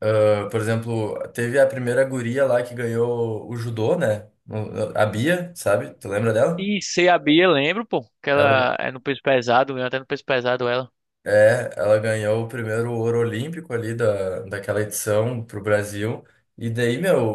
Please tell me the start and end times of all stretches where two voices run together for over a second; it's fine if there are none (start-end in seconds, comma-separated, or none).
none